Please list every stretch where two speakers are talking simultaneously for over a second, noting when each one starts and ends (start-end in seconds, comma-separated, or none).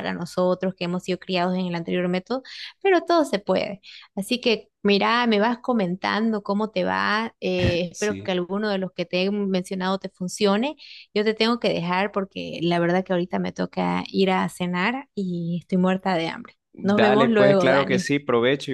16.8-18.1